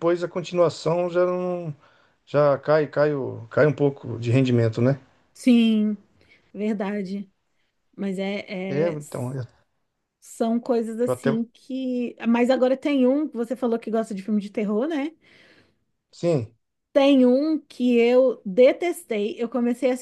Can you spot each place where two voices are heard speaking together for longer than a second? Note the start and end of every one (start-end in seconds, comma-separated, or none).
none